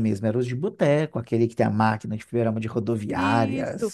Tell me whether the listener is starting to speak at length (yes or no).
yes